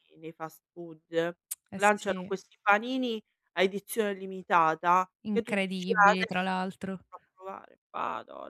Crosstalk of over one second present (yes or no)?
yes